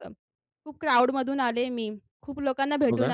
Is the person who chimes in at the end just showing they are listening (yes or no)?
yes